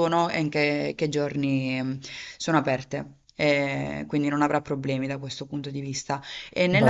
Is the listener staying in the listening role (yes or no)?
yes